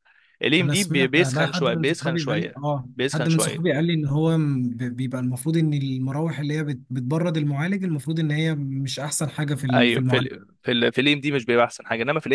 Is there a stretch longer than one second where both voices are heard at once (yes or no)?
yes